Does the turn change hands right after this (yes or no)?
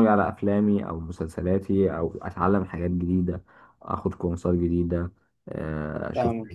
yes